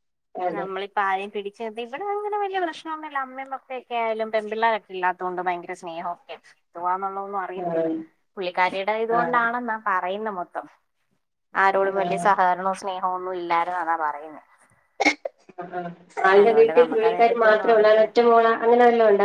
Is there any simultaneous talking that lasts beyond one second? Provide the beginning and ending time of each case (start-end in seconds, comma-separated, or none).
16.4-18.1